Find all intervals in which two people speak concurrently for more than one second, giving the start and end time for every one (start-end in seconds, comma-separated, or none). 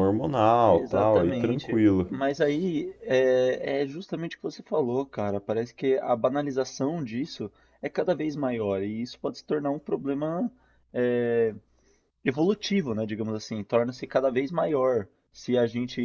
0.7-2.1